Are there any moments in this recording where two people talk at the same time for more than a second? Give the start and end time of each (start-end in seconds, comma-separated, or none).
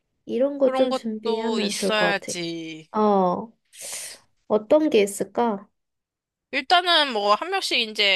0.6-2.4